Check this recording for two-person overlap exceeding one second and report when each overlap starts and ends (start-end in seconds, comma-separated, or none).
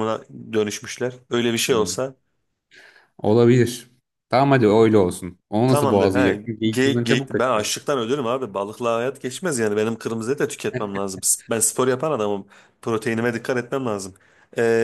5.7-7.7